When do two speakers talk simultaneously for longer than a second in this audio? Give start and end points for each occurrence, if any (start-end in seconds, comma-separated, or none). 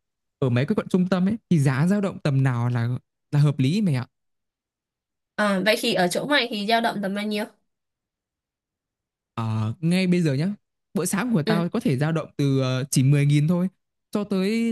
none